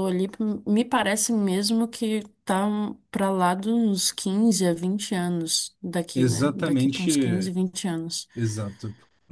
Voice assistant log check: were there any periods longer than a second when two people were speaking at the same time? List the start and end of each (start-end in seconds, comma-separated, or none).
6.1-7.4